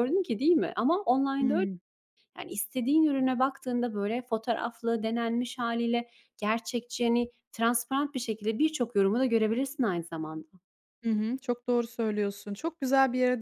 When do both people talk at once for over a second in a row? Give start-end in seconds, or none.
none